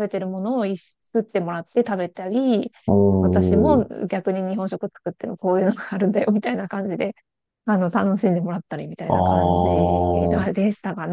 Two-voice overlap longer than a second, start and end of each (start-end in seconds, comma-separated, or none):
9.1-10.5